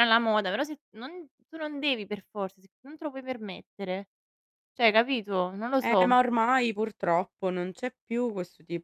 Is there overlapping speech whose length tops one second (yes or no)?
no